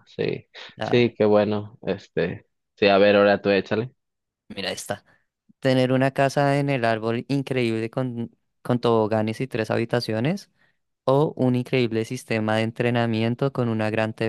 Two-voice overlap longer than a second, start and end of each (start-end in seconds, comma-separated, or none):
none